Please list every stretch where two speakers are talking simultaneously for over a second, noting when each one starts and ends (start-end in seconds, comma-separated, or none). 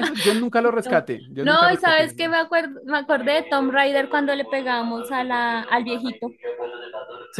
0.8-2.3